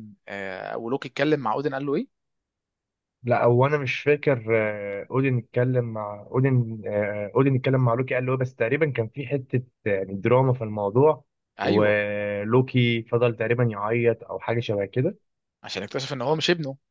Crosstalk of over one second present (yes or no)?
no